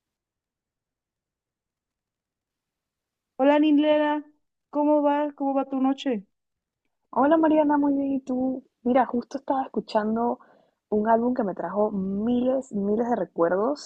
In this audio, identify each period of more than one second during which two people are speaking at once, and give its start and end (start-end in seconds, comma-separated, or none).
none